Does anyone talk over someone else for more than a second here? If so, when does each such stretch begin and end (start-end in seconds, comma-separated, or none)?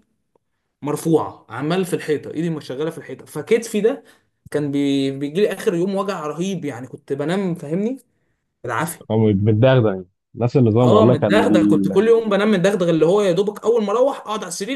10.8-12.0